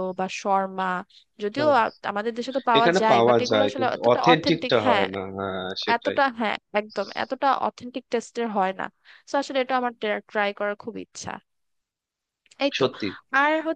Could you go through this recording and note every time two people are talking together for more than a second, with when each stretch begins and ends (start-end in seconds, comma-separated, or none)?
2.8-5.1